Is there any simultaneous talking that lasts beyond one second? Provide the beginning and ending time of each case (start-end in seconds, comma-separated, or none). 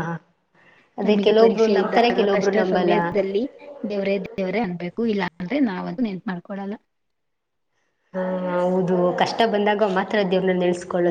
1.0-2.9